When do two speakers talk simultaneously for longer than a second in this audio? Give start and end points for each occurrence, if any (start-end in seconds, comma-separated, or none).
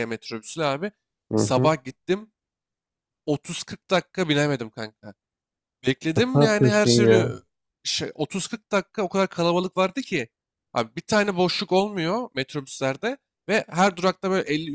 6.1-7.3